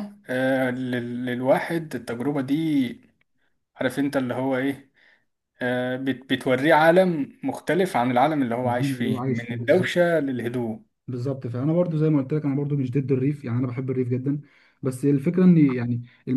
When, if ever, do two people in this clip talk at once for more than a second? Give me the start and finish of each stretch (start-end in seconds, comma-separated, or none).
8.6-9.9